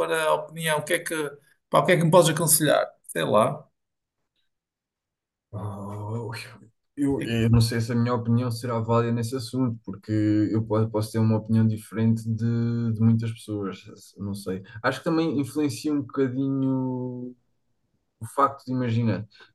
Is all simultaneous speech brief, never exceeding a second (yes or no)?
yes